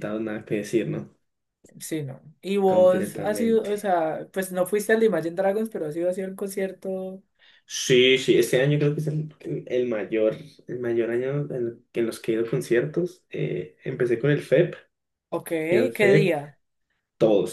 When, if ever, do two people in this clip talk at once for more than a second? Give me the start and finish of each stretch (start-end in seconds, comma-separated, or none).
2.6-3.9